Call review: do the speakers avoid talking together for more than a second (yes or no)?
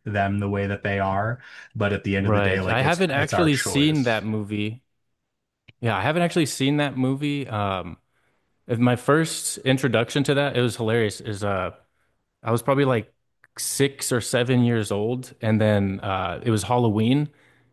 no